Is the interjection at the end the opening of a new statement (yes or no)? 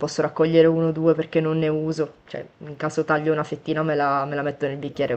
no